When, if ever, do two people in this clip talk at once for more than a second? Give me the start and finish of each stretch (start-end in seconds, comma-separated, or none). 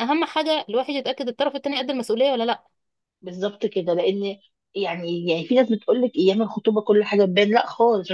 none